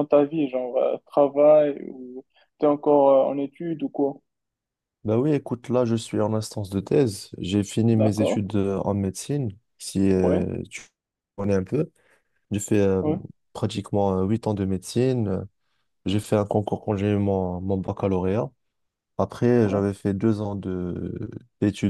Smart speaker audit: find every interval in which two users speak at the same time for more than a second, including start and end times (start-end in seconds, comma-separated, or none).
none